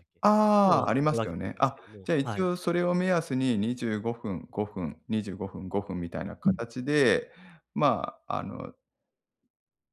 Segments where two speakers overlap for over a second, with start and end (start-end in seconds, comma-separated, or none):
0.6-2.5